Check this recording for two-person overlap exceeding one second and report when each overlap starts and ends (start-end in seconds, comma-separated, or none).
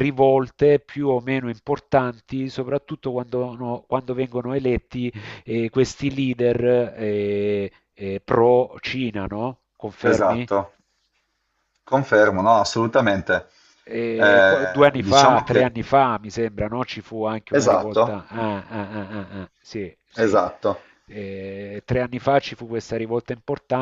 14.2-15.8